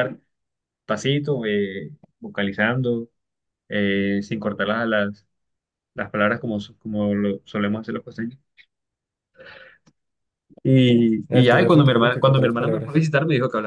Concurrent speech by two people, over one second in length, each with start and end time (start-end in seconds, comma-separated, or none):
11.3-13.1